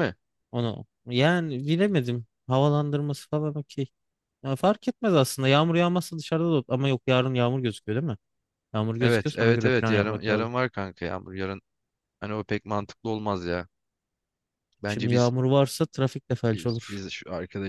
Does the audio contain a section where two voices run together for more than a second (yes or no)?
yes